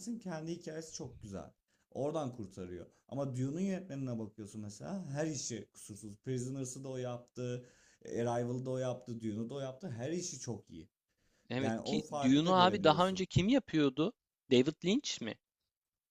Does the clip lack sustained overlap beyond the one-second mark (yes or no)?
no